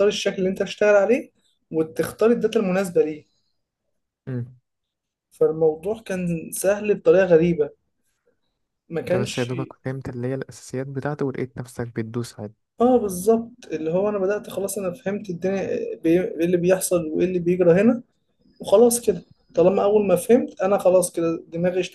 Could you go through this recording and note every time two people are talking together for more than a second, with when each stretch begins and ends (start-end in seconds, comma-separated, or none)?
none